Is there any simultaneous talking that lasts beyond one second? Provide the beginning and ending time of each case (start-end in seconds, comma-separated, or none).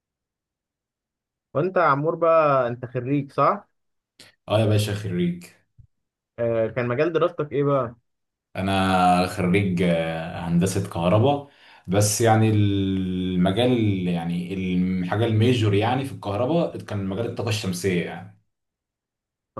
none